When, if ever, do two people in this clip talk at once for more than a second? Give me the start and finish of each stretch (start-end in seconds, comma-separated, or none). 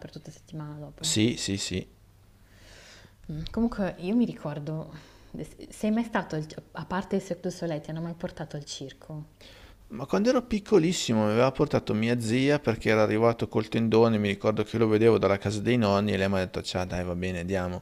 none